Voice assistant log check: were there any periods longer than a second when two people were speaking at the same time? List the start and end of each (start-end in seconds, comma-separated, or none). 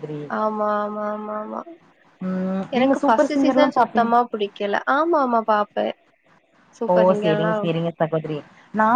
2.8-4.1